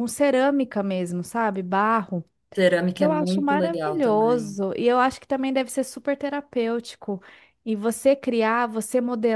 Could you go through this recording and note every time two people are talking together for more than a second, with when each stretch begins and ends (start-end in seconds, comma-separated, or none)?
2.9-4.6